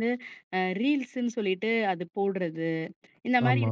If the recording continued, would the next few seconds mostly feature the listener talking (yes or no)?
no